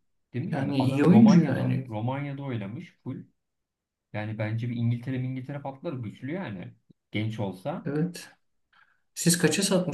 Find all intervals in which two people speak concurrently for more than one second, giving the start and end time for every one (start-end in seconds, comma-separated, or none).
0.5-1.9